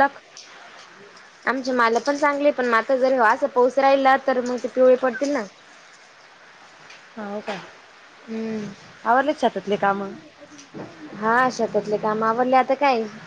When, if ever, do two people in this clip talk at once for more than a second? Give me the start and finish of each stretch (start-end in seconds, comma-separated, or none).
none